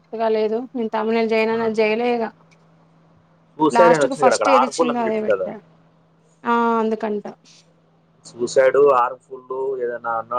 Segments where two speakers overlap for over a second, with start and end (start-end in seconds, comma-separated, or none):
3.8-5.5